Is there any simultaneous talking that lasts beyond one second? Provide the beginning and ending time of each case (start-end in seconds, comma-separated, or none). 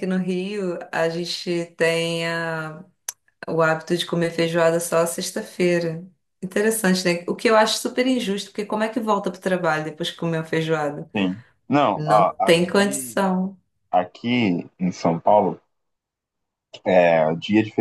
11.9-13.3